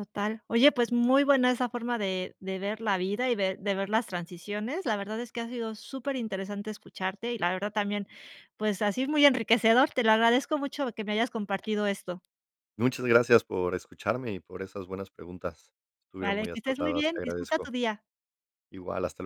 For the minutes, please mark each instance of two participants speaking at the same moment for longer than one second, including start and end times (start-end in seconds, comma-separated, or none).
16.2-17.7